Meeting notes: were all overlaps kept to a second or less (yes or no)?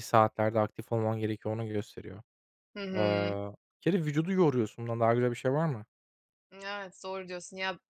yes